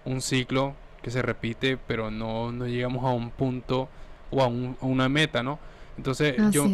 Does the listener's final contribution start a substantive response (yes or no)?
no